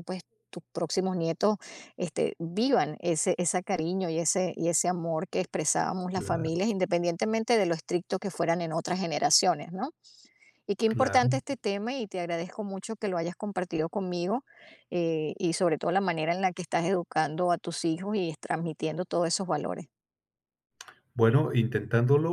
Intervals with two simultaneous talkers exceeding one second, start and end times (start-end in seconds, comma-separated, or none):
none